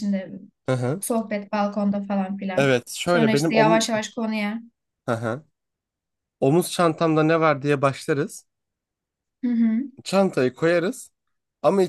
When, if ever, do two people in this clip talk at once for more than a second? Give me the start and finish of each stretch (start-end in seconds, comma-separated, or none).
2.5-3.8